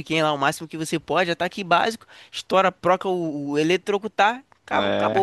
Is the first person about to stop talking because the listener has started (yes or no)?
no